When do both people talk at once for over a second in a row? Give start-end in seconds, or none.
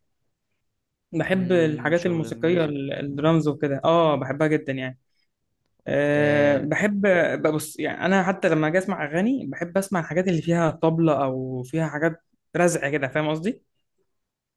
1.3-2.8